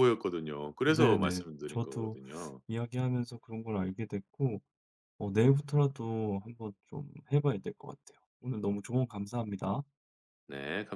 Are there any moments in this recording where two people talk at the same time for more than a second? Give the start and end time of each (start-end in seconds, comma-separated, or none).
0.8-2.2